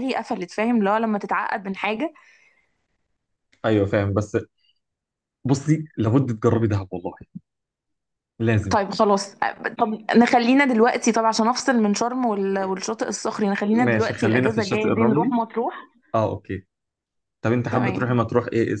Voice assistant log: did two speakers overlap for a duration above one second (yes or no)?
yes